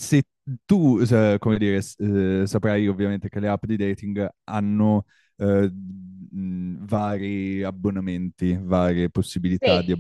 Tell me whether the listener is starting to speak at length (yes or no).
no